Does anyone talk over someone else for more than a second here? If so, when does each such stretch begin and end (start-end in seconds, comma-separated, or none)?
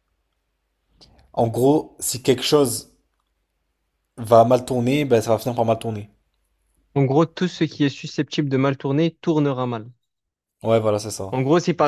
none